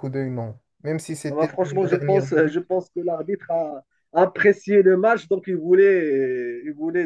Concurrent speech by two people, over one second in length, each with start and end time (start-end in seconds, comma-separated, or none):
1.3-2.6